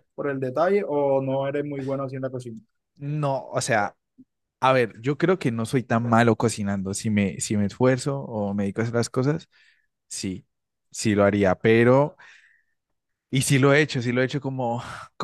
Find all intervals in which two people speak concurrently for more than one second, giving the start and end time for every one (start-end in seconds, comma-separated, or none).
none